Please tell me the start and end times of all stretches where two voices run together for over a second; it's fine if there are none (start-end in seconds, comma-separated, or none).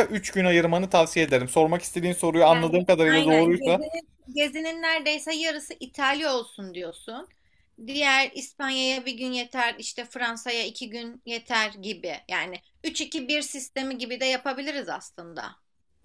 2.5-3.9